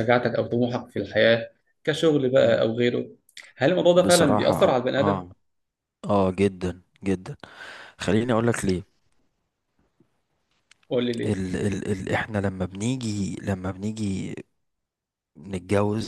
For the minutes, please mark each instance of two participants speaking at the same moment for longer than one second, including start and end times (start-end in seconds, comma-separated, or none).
3.9-5.2